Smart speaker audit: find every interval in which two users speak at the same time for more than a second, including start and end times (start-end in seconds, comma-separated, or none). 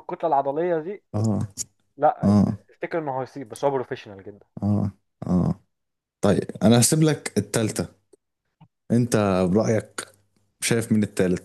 none